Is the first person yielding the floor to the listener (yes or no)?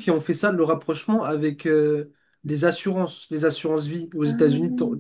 no